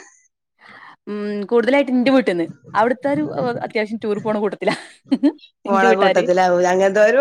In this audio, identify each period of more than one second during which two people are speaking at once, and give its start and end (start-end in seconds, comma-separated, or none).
none